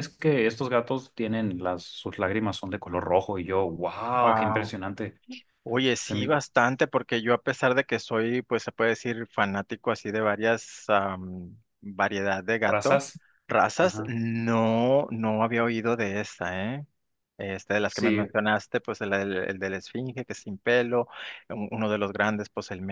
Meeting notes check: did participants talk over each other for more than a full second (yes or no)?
no